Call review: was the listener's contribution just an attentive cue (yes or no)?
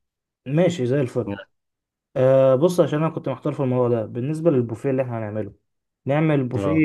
yes